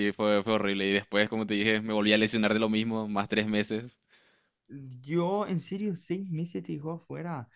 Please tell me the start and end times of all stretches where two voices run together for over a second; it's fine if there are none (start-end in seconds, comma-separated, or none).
none